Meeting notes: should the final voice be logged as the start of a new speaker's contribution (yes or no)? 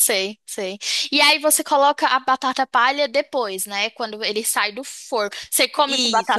yes